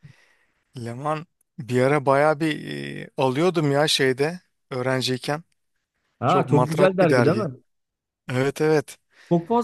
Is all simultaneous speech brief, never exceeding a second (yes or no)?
no